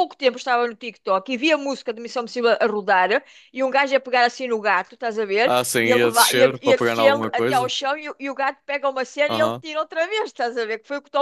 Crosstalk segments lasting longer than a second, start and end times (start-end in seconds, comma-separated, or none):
5.4-7.7